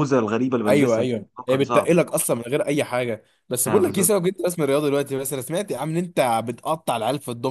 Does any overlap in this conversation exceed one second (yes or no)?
yes